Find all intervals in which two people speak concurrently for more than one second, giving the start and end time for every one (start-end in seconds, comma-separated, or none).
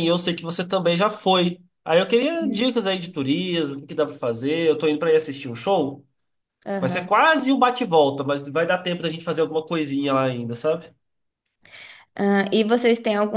none